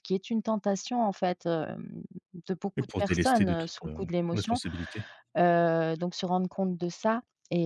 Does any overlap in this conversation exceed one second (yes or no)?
yes